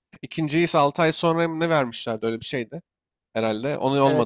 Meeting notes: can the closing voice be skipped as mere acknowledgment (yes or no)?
no